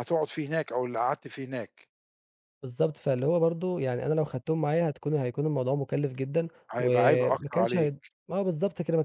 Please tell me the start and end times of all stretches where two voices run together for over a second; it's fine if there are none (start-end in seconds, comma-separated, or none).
6.7-8.0